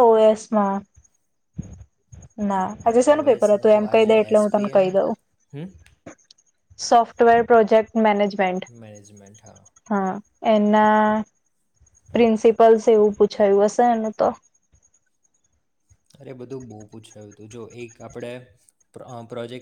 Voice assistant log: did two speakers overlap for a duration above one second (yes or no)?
yes